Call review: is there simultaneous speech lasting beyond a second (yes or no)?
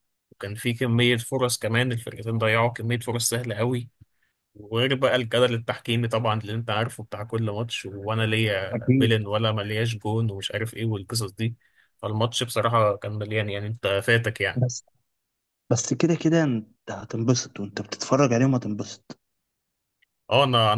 no